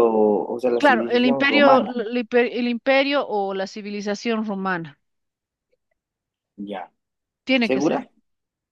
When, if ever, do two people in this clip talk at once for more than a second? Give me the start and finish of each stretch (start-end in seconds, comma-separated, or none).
0.8-2.0